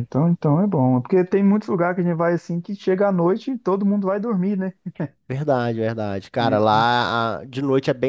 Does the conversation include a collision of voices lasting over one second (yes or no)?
no